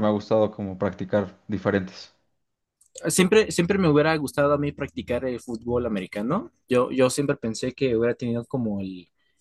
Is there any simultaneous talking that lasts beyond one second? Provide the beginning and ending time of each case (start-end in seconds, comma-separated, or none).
none